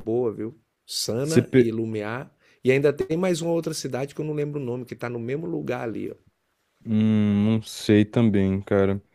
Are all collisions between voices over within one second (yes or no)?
yes